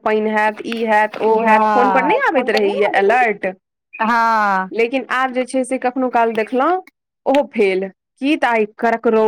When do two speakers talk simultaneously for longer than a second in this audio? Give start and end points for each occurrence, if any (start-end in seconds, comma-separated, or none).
1.2-3.3